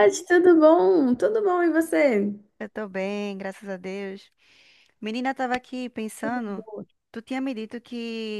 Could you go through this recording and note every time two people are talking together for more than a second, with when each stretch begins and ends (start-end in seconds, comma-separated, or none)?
none